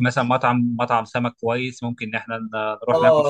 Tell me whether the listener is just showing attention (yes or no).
no